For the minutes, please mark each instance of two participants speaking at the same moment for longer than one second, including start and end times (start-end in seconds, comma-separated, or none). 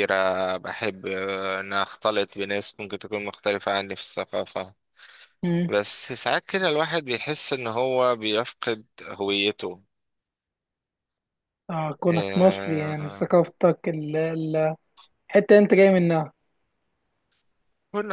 12.1-13.3